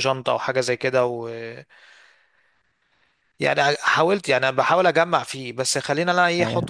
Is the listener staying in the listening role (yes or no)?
yes